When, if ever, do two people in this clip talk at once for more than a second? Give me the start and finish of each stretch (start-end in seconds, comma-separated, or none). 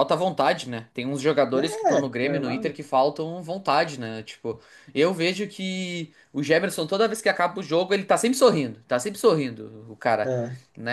1.5-2.8